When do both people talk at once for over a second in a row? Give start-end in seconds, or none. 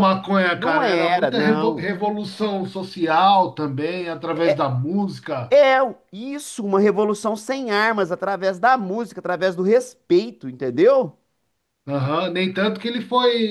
0.6-1.9